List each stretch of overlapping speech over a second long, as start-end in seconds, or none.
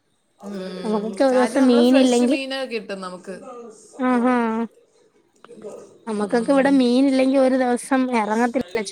0.8-2.4